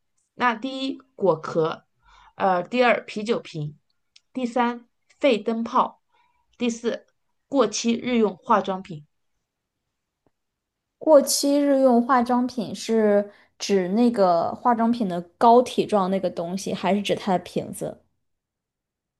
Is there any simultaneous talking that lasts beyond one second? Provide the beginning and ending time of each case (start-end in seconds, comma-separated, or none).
none